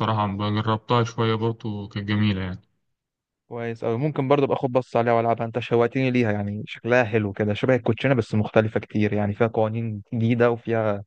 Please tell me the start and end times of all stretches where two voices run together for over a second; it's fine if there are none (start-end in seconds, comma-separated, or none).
none